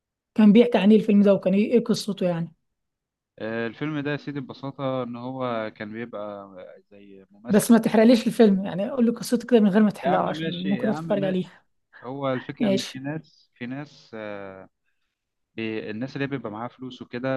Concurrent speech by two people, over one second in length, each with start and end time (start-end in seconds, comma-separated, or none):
10.0-11.5